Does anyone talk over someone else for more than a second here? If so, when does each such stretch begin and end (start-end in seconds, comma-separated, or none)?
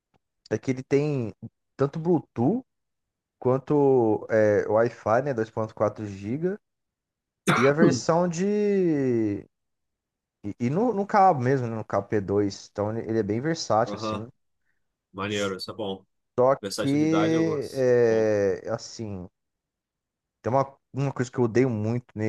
16.6-18.3